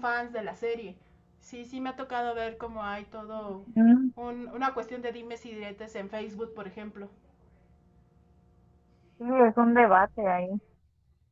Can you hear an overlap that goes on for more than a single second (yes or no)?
no